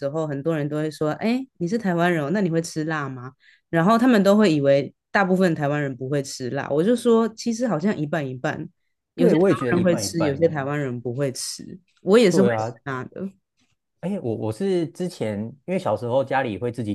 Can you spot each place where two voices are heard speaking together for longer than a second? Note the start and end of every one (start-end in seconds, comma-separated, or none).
9.1-10.6